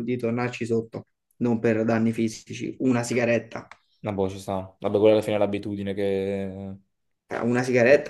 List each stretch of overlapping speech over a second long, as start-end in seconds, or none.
none